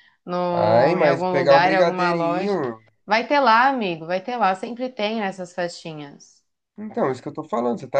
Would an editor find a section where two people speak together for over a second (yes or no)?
yes